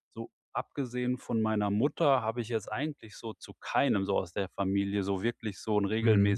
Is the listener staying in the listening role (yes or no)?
yes